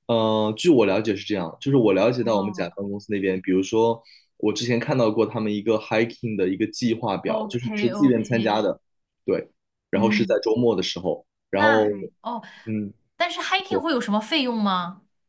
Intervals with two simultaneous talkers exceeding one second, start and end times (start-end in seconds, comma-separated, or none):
7.3-8.6